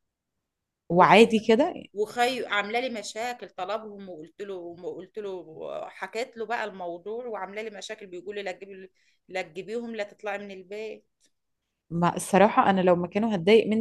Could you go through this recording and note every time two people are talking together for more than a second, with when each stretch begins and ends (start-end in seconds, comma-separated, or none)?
none